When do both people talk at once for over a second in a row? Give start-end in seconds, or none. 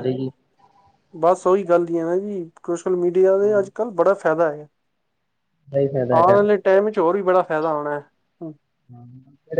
none